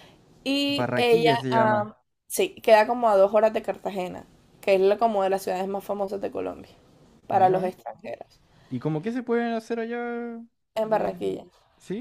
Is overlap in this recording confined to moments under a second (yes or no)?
no